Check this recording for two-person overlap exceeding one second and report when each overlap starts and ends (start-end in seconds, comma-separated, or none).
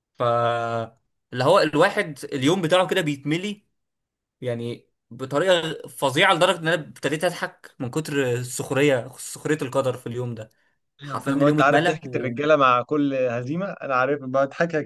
11.0-12.3